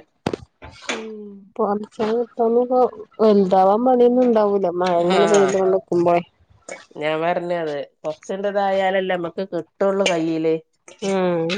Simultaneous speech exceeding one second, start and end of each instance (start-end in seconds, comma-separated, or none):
none